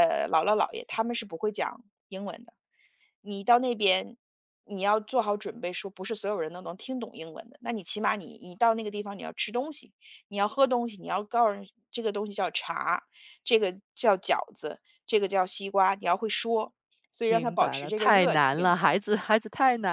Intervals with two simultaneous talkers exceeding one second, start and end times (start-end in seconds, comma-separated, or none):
17.2-18.7